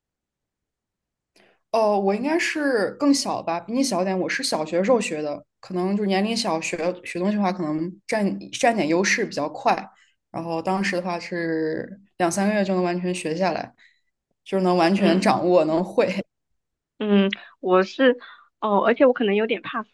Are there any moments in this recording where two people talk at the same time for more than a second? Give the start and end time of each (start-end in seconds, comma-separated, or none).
none